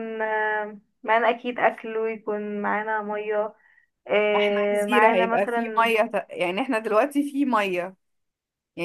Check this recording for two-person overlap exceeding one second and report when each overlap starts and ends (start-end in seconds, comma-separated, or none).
4.4-5.9